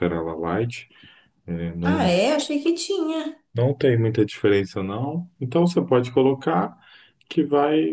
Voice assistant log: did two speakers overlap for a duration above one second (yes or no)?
no